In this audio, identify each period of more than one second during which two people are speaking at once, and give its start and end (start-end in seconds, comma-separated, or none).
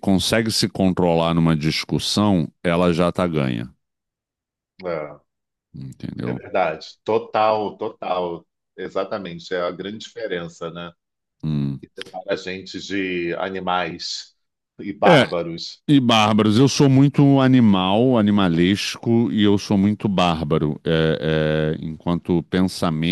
none